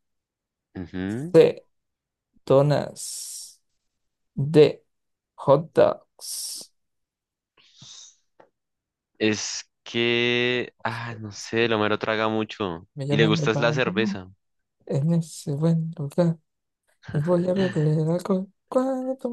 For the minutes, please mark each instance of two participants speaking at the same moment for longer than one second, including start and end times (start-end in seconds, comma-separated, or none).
12.9-14.2